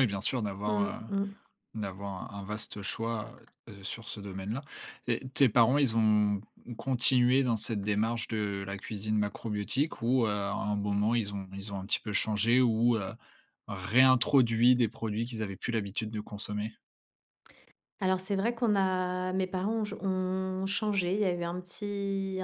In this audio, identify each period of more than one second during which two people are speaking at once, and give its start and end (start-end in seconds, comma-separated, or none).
none